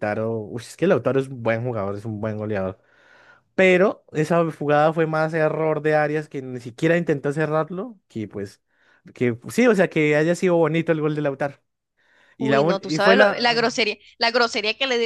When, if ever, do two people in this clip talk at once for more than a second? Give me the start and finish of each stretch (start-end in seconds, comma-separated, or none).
12.4-13.8